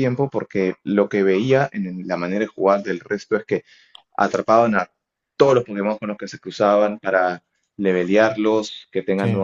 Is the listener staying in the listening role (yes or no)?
yes